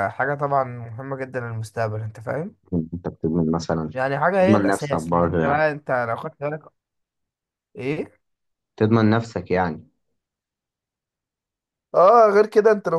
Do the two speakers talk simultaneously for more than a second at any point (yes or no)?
yes